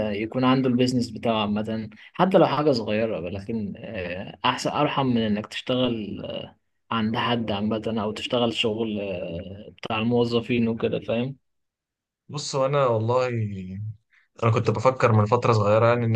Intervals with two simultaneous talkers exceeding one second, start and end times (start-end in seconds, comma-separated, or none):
none